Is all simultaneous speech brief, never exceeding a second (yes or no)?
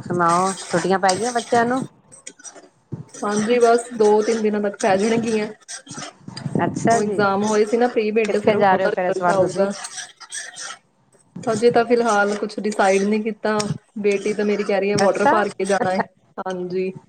no